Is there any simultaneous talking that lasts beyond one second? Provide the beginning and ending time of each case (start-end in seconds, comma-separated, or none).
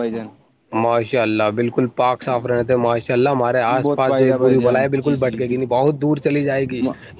3.8-5.8